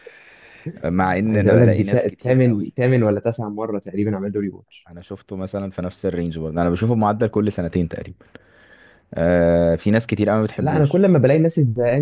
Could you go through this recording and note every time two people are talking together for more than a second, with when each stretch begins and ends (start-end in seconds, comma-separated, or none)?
1.2-2.7